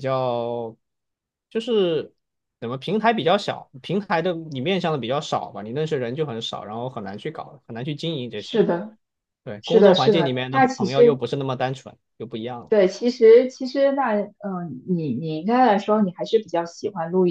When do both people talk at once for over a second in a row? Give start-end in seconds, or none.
9.6-11.2